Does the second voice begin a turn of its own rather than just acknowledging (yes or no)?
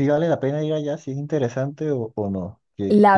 yes